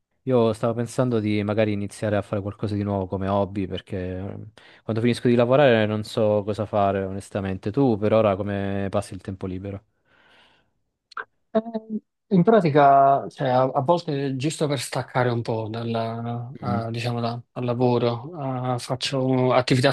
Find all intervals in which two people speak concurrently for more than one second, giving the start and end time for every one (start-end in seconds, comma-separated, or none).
none